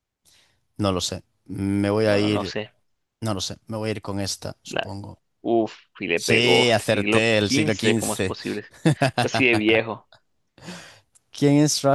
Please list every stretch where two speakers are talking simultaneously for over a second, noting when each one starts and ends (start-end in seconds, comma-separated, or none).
6.1-8.3